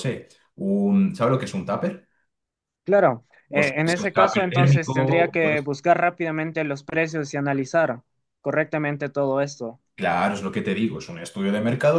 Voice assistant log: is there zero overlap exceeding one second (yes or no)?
no